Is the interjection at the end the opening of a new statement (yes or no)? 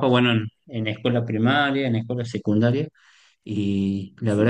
no